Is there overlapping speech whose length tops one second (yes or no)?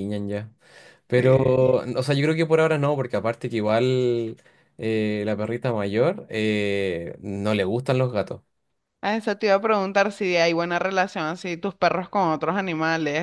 no